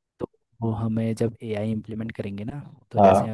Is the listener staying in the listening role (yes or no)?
yes